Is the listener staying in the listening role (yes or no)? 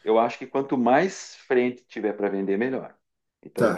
no